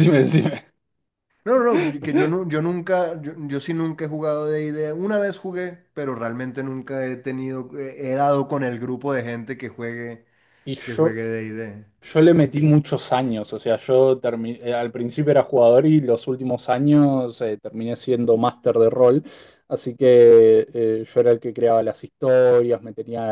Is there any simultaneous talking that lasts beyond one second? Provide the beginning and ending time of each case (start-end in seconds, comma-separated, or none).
none